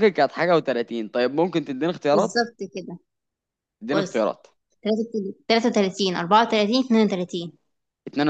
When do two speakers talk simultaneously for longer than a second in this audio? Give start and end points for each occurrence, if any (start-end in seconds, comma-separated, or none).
none